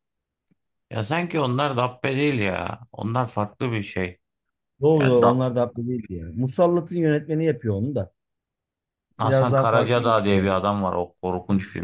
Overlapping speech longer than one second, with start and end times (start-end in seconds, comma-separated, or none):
9.2-10.6